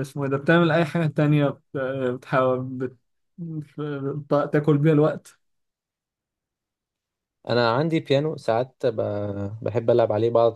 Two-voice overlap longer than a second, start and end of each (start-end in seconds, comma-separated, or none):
none